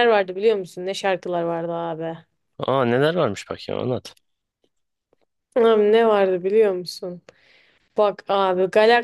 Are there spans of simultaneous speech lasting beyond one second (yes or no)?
no